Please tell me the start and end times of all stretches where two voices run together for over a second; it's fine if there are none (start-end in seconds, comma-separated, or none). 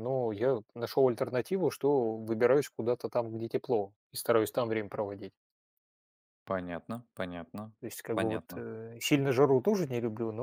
none